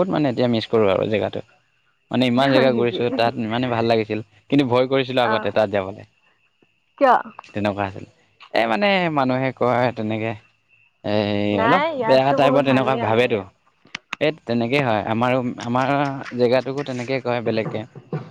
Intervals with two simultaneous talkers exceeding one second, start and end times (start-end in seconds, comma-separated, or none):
11.7-13.4